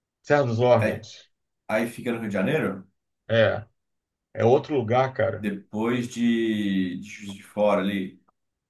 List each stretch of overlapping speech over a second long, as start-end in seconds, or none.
none